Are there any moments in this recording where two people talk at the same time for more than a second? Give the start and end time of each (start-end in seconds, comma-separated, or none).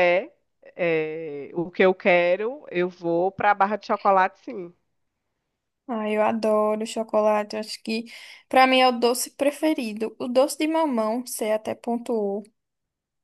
none